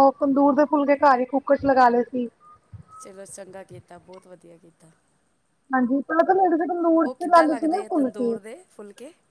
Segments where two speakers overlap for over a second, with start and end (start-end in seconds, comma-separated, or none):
7.0-8.4